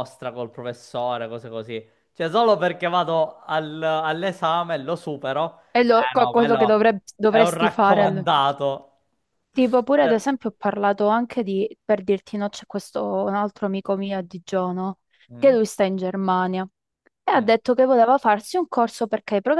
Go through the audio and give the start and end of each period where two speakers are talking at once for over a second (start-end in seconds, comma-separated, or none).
5.7-8.3